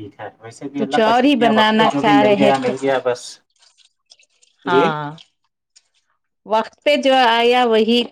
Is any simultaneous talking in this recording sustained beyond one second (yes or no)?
yes